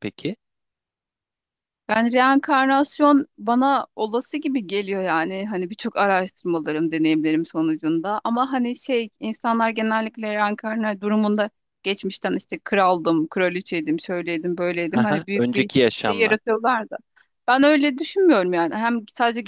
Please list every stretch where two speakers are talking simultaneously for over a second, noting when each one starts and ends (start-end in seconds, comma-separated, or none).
14.9-16.4